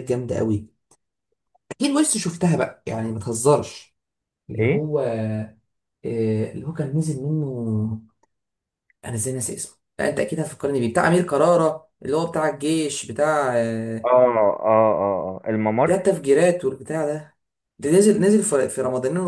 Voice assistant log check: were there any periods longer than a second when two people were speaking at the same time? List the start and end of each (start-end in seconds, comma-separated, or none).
none